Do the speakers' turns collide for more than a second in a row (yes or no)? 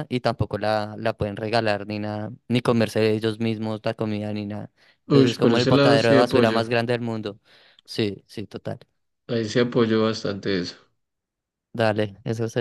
yes